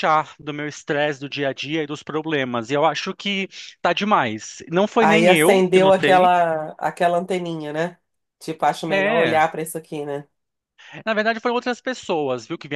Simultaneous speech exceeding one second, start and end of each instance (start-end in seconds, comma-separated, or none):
5.0-6.3